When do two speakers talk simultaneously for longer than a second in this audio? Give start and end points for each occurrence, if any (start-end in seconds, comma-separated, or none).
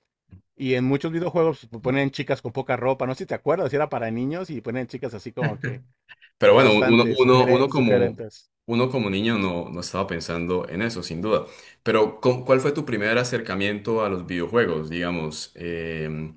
6.4-8.2